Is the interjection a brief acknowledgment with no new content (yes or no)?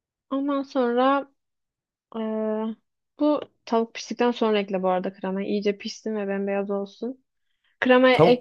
no